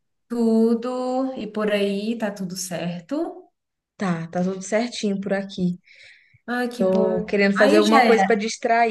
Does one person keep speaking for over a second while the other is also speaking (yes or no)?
yes